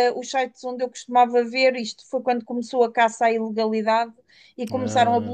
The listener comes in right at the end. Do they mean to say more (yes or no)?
no